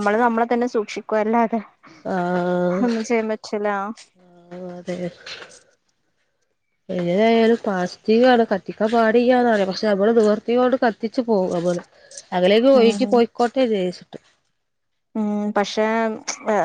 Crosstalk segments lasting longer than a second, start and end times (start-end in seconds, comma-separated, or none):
none